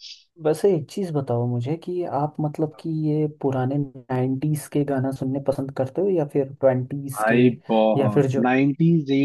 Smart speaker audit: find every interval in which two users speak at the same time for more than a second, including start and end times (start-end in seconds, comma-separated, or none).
none